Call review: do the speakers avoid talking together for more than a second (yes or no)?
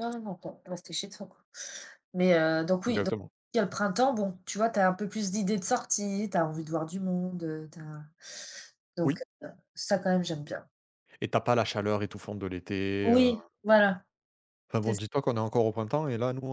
yes